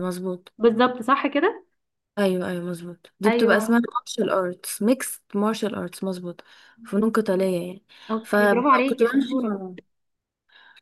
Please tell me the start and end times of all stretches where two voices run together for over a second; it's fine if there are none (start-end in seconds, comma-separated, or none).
8.2-9.6